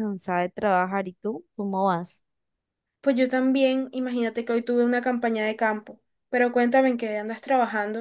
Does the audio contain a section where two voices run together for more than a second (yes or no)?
no